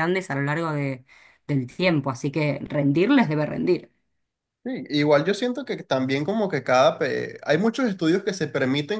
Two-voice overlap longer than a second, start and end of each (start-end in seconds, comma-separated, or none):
none